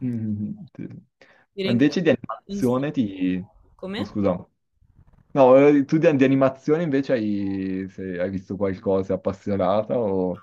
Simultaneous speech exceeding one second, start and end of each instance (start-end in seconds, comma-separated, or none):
1.6-2.8